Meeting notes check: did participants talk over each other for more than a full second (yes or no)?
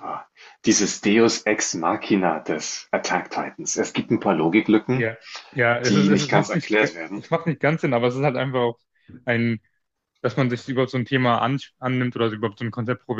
yes